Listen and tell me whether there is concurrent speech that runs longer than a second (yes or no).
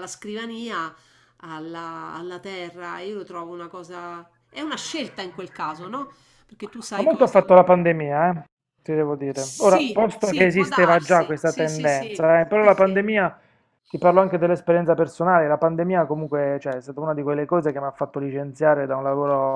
yes